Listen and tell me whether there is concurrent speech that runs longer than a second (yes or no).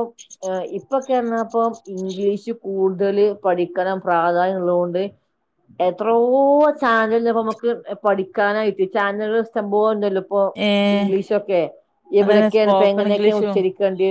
yes